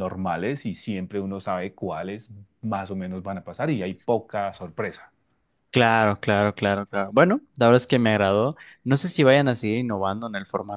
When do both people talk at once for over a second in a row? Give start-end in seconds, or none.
none